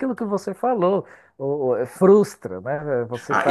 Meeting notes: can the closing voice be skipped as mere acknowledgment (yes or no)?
no